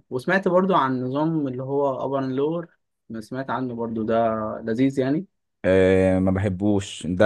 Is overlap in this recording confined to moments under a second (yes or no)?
yes